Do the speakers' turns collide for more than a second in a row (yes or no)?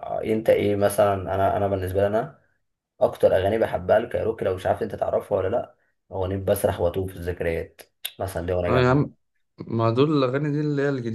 no